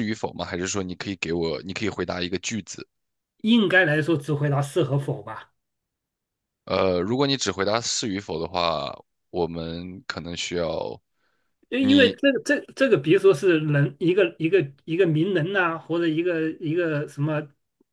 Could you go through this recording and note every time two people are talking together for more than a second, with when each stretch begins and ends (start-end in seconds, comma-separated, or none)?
none